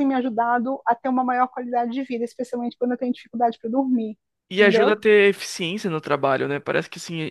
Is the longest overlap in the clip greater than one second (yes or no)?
no